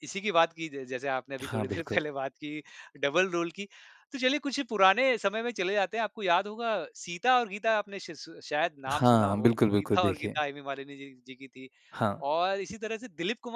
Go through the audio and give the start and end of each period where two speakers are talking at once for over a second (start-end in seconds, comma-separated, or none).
8.9-10.4